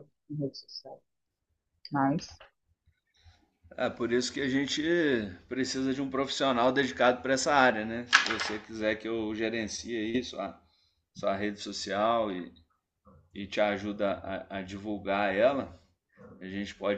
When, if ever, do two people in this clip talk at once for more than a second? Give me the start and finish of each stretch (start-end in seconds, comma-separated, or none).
none